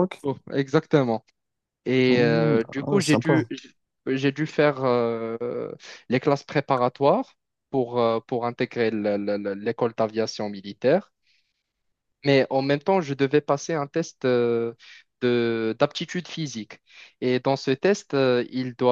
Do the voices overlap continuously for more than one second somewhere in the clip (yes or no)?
yes